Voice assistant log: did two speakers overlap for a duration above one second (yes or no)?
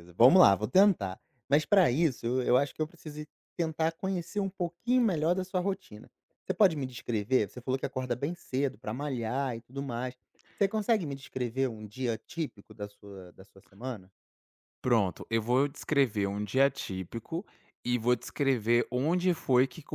no